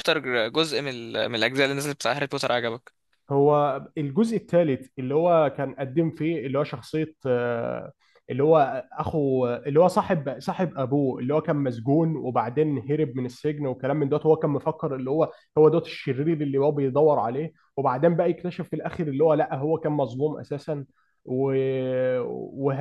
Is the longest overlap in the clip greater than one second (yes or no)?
no